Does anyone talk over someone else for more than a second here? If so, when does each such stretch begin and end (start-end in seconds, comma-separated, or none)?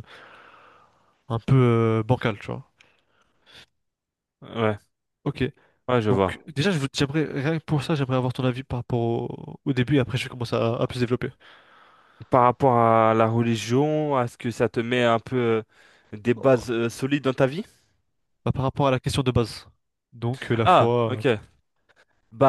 none